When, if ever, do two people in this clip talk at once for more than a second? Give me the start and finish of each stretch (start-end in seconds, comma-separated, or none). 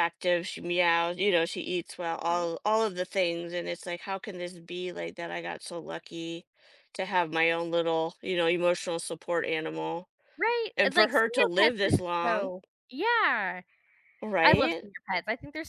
10.8-12.5